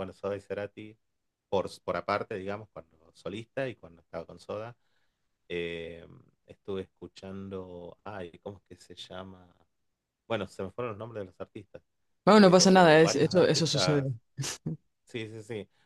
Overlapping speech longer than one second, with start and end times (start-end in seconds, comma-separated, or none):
12.3-14.1